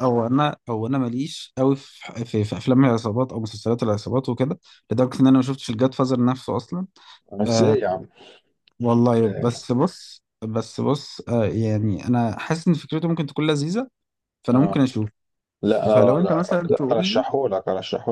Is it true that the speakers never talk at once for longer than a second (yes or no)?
no